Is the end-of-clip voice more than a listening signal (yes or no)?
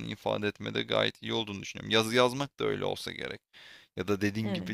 no